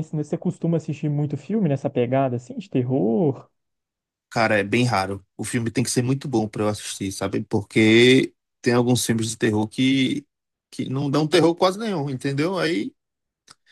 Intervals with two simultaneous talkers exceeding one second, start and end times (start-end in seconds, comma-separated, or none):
none